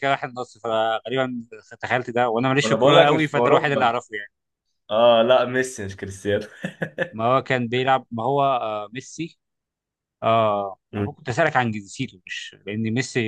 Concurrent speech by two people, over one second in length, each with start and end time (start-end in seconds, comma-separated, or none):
2.6-3.9